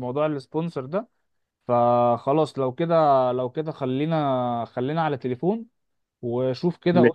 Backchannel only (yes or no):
yes